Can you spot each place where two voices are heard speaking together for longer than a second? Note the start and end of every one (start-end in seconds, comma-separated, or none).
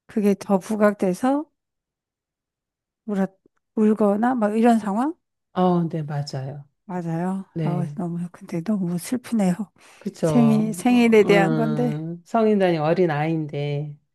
10.2-11.9